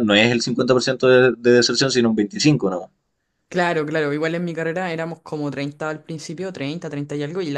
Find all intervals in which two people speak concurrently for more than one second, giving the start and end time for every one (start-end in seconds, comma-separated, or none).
none